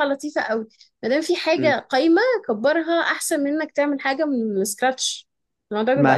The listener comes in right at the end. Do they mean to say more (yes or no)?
yes